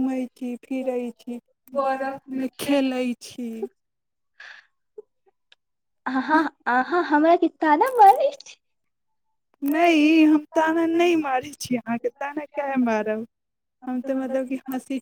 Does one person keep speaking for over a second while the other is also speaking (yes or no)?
yes